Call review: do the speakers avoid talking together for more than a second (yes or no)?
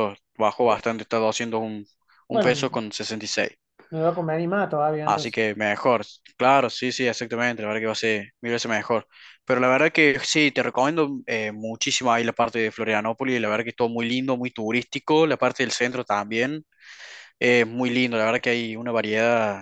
yes